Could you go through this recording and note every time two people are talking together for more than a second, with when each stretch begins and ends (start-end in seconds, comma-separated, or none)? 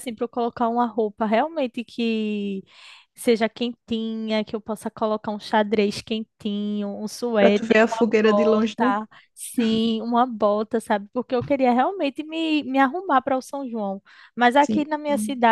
7.4-8.9